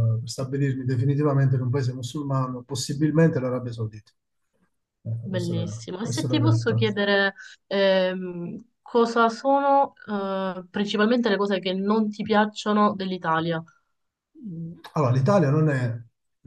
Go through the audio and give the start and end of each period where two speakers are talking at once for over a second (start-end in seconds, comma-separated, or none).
5.2-6.9